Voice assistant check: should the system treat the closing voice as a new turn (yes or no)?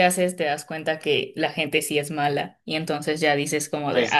yes